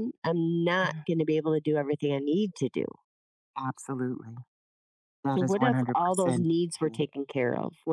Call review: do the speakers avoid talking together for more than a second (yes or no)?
no